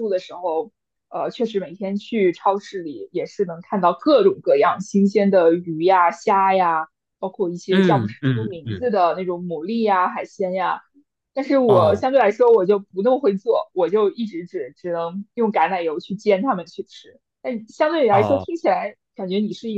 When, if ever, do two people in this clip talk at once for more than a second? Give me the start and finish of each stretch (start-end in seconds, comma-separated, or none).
7.7-8.9